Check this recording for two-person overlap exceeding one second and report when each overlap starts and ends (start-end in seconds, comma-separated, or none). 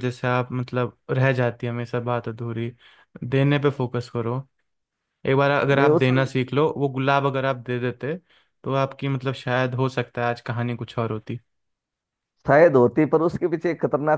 none